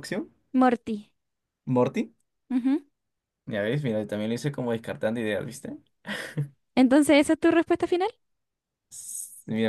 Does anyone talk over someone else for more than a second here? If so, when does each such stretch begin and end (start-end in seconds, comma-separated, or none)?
none